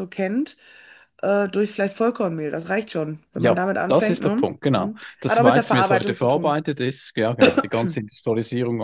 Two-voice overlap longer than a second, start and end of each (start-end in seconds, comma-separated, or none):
3.4-6.6